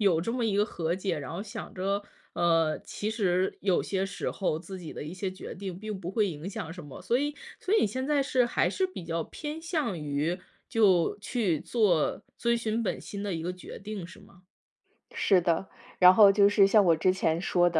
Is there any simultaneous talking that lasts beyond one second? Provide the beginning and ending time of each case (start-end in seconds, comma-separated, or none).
none